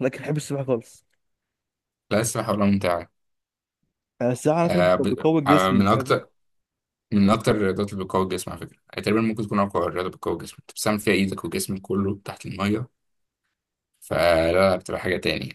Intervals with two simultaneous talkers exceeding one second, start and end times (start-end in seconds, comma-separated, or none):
4.6-6.2